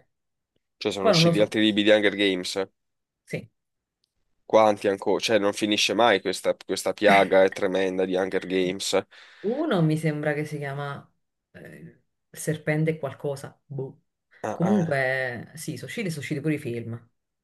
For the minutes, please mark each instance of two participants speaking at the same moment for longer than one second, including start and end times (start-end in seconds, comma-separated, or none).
none